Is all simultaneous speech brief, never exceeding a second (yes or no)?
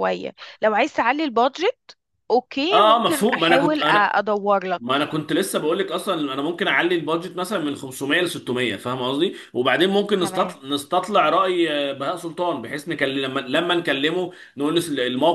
no